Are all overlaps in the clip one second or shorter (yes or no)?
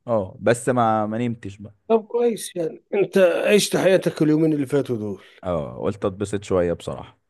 yes